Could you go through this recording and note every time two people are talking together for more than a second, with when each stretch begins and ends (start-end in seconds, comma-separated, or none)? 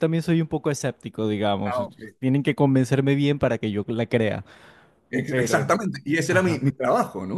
none